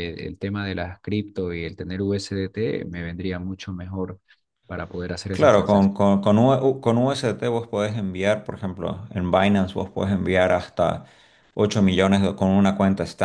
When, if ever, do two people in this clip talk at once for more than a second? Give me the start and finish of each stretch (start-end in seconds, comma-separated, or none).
none